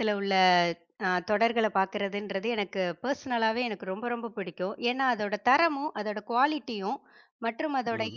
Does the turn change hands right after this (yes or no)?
no